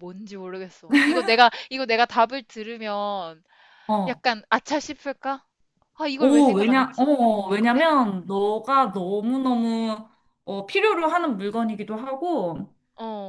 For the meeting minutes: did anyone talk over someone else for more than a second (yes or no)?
yes